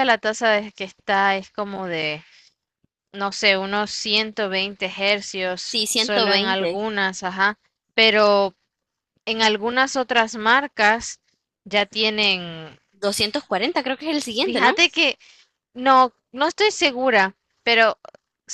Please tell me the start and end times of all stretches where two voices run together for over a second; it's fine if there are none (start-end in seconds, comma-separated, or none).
5.6-6.8